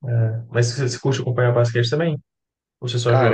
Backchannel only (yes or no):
no